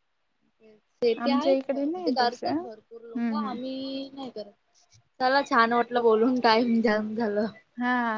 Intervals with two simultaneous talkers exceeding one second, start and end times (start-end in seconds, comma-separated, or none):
1.2-2.5